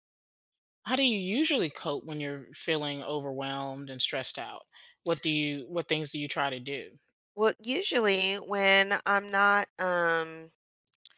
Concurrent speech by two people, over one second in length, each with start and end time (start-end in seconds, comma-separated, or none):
none